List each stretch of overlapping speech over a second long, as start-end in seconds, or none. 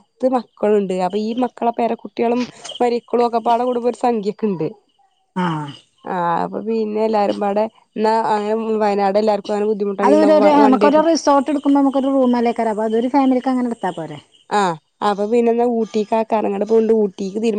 none